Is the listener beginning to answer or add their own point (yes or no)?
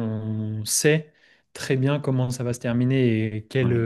no